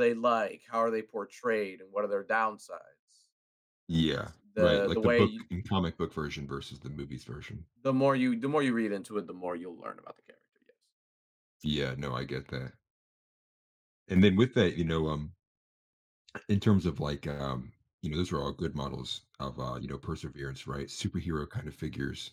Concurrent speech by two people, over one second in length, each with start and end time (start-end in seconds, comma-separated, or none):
3.9-5.4